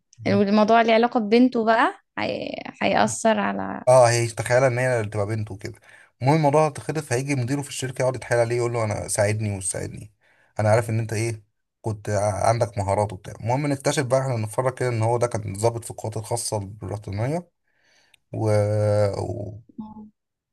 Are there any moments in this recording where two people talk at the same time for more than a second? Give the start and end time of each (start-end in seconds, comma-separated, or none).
none